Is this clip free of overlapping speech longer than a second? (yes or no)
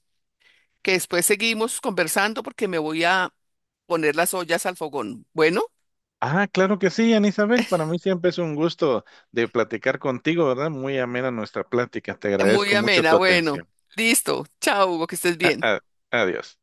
no